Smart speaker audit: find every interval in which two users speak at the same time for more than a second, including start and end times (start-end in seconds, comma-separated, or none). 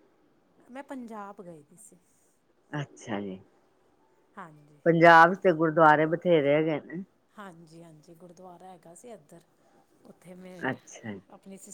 none